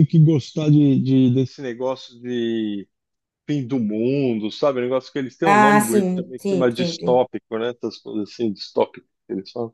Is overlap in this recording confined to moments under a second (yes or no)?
no